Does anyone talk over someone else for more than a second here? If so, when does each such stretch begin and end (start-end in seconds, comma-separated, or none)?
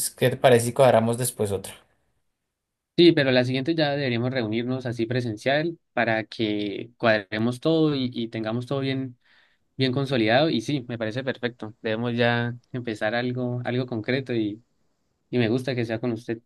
none